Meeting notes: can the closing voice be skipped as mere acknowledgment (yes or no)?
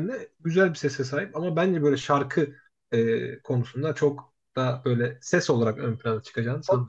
no